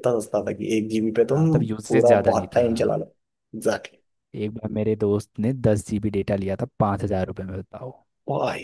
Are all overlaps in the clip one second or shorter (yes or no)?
no